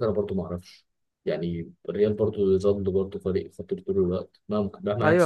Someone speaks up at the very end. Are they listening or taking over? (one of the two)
taking over